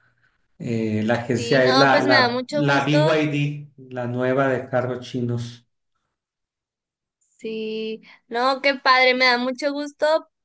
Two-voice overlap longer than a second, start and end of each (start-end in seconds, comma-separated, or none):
1.3-3.1